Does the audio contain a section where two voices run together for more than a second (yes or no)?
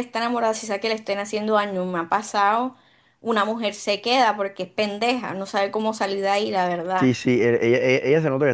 no